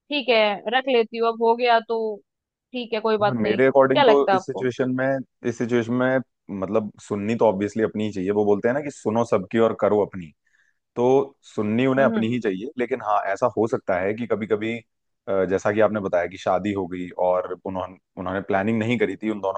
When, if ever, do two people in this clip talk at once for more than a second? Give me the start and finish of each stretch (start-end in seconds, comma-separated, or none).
3.3-4.7